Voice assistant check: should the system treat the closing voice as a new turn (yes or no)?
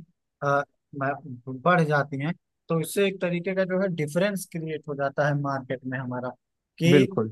no